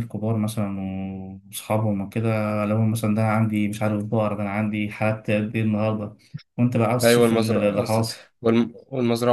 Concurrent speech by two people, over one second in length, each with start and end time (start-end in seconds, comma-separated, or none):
7.0-8.3